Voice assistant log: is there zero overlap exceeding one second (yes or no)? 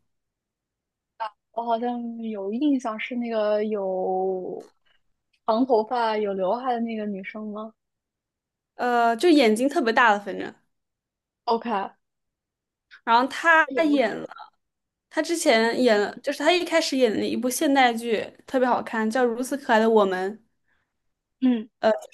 yes